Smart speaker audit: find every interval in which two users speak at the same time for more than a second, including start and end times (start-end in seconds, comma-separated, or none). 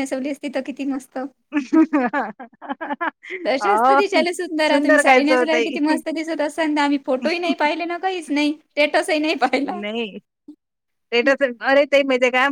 none